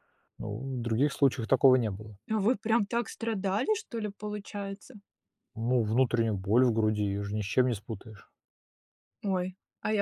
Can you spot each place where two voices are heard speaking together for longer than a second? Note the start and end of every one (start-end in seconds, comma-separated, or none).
none